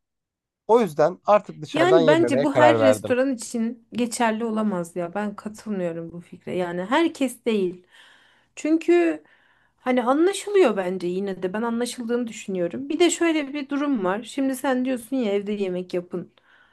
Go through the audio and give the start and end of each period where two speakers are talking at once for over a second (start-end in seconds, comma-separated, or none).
1.7-3.2